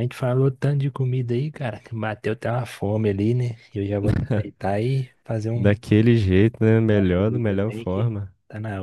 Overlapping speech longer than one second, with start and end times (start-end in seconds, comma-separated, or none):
6.9-8.1